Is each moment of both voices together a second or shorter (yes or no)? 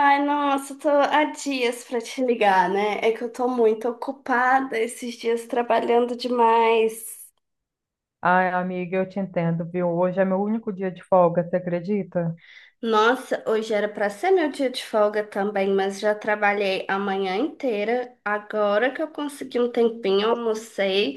yes